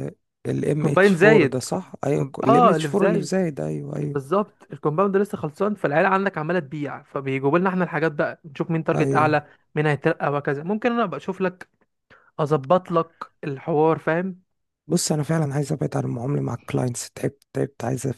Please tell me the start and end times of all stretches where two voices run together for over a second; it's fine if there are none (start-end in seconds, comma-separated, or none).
0.8-3.4